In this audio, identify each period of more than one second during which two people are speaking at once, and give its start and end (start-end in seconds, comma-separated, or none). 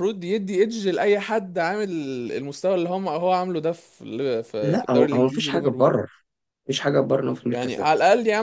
4.6-6.0